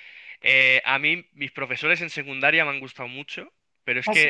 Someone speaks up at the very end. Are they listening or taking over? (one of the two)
listening